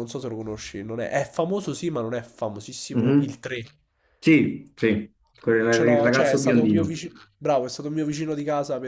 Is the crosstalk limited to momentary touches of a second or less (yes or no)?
no